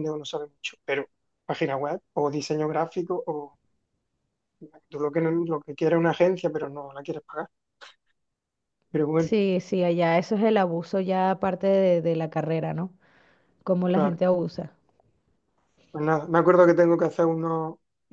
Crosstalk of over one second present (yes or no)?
no